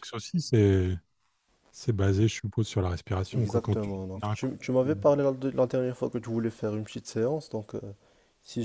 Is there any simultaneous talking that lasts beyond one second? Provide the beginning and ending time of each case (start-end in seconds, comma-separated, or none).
3.3-5.0